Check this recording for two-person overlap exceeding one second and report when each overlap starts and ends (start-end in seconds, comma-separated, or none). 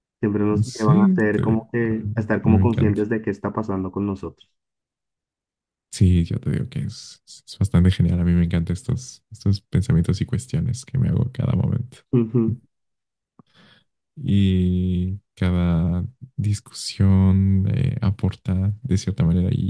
0.6-3.0